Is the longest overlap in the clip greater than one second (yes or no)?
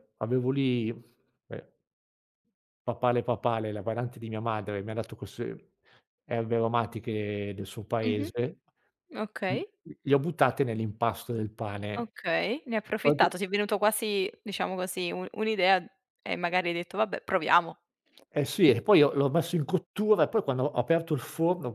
no